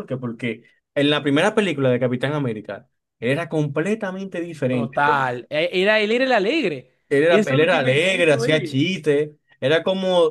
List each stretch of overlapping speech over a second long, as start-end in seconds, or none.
7.1-8.8